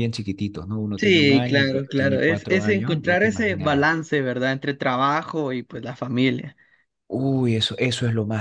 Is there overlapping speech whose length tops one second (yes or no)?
yes